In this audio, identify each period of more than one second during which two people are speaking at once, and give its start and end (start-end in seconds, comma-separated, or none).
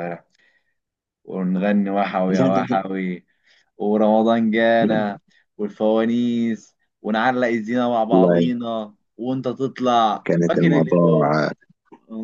10.3-11.5